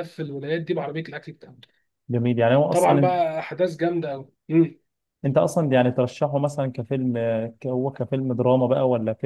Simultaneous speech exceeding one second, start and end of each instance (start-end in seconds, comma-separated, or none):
none